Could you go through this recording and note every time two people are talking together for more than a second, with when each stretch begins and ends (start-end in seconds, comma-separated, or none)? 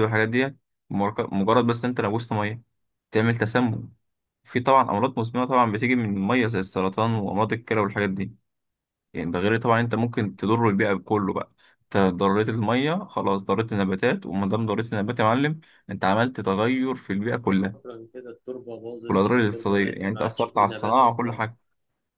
19.1-21.4